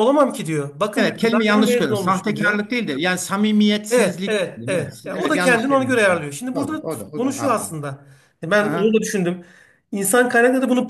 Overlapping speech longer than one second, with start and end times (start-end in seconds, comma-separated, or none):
0.9-2.6, 3.9-7.7